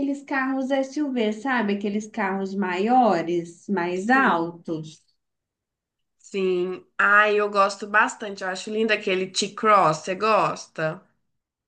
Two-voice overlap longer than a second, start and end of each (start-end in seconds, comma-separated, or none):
none